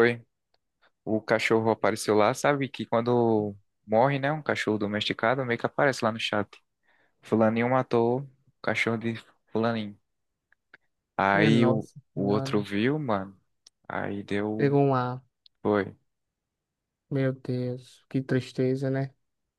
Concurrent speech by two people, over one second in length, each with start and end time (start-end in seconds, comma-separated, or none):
11.3-12.7